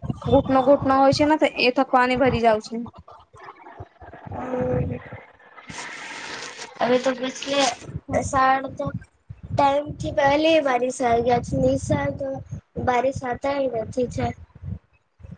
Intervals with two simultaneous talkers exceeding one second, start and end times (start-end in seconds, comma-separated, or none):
none